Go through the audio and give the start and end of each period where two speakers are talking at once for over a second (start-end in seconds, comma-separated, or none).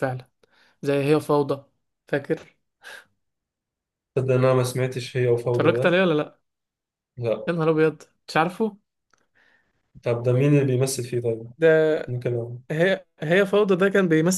none